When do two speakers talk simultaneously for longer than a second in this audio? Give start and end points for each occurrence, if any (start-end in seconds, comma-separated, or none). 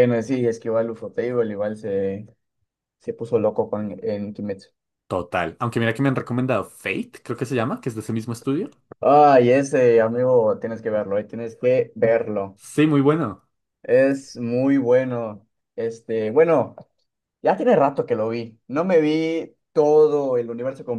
none